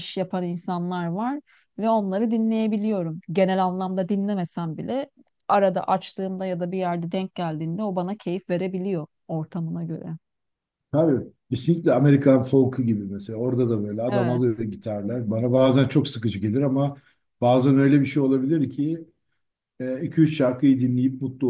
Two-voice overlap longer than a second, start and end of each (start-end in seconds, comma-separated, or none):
none